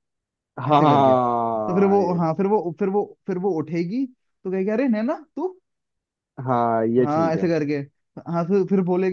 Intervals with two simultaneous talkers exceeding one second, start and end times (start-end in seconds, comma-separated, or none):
0.7-2.2